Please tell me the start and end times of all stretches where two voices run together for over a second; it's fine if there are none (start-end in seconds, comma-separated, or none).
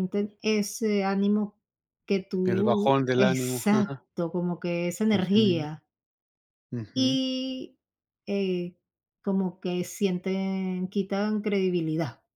2.4-4.0